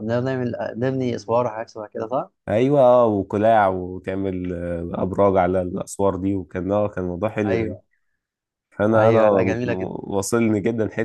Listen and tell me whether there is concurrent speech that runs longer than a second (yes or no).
no